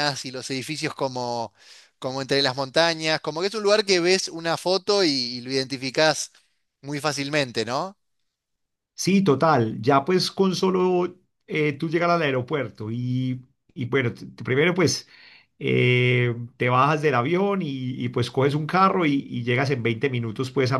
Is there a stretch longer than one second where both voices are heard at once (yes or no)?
no